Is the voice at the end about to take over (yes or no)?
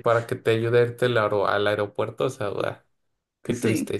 no